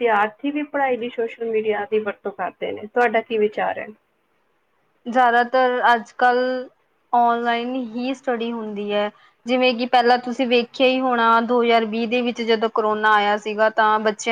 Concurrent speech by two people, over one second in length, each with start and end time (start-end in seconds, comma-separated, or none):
none